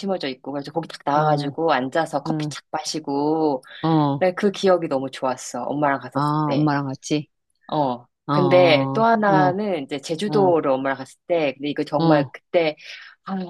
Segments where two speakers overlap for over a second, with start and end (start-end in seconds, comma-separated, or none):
8.3-9.6